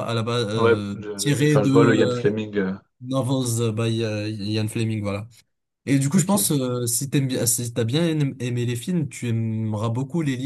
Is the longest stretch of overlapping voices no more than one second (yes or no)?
no